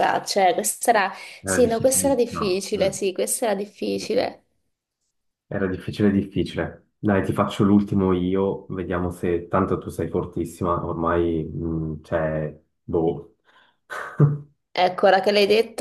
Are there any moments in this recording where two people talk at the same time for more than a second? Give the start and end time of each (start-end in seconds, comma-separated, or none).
1.4-3.0